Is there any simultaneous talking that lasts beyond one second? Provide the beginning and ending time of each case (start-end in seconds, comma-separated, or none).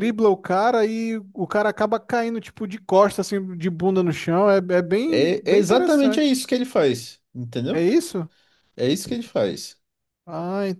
5.1-6.4